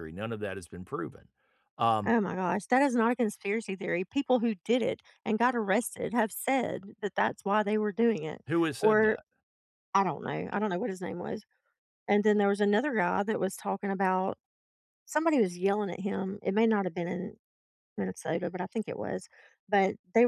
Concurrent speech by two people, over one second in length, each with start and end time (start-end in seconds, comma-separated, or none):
none